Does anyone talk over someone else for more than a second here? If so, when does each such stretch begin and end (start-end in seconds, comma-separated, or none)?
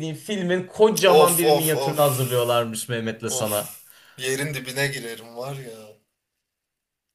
1.1-2.7